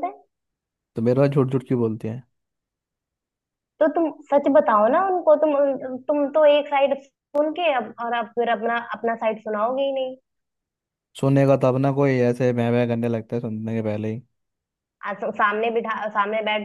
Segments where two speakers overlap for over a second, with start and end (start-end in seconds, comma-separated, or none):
none